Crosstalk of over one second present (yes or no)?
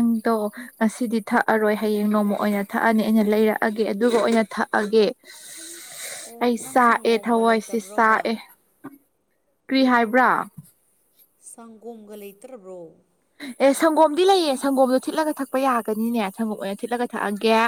yes